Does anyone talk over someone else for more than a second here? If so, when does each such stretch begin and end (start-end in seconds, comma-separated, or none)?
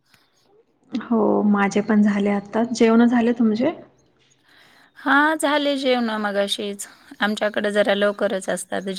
none